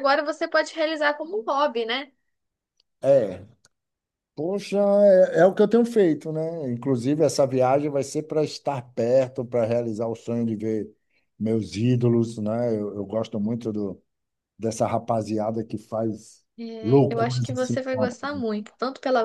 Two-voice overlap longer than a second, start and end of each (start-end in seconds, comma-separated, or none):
16.8-18.2